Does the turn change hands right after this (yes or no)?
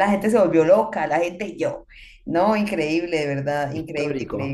no